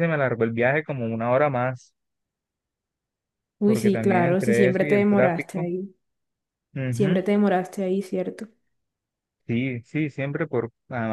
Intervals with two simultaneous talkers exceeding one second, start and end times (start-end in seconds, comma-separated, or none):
3.6-5.7